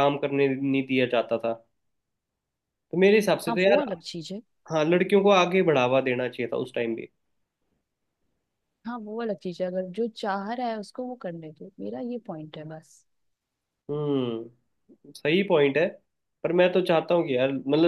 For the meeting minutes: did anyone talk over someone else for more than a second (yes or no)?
no